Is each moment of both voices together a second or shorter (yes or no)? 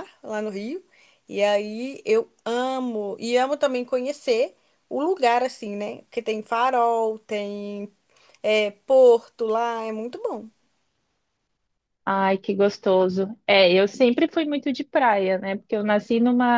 yes